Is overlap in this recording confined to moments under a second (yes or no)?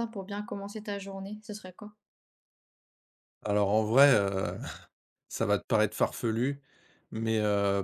yes